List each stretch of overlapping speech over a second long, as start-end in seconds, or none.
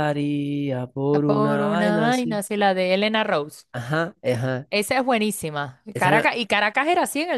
1.1-2.4